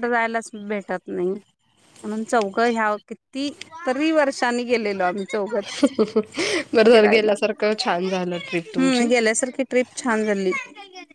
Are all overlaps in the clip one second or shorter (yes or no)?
yes